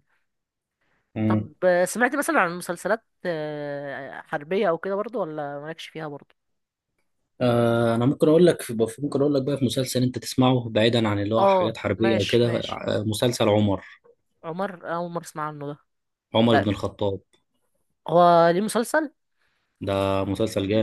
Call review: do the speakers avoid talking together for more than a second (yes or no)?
no